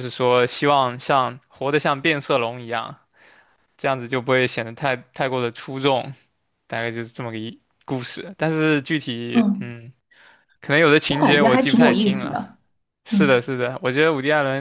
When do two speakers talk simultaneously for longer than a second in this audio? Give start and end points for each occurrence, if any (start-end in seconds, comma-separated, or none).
11.1-12.4